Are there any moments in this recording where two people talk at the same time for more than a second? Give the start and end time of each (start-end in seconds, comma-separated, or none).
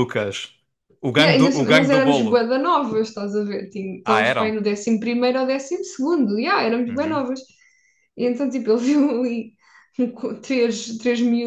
1.2-2.5